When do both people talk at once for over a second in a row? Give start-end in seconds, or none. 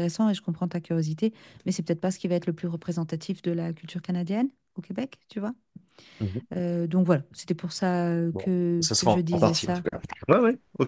8.3-9.8